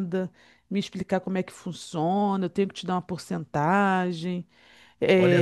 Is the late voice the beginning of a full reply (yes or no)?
yes